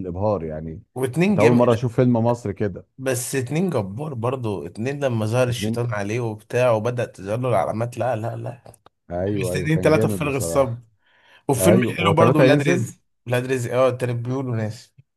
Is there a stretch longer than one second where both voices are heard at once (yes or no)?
yes